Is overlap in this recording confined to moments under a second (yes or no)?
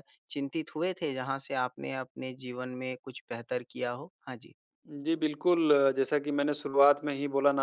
yes